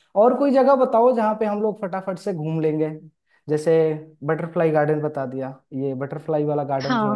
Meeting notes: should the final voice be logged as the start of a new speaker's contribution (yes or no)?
yes